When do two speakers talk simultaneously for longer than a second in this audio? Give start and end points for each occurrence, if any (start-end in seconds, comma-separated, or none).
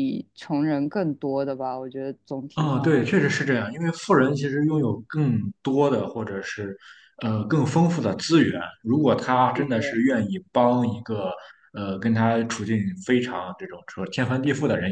none